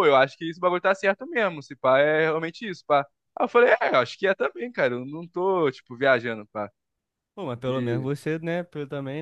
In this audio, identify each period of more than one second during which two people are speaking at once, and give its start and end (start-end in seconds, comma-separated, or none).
none